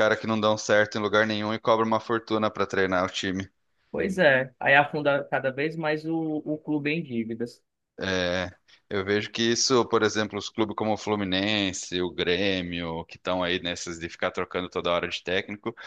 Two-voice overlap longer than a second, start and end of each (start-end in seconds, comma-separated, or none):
none